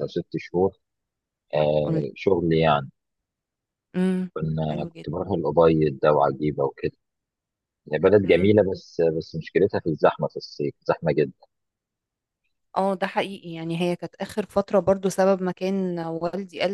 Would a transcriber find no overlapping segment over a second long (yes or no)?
yes